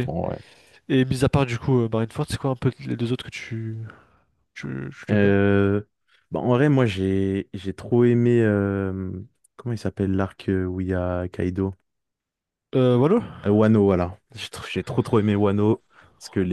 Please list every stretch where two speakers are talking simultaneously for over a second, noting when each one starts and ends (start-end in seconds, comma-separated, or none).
none